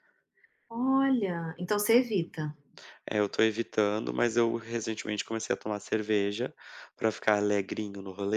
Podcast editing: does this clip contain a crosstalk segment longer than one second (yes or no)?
no